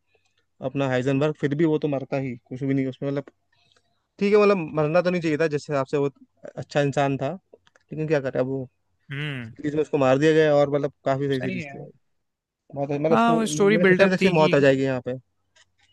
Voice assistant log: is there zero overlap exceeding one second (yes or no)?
no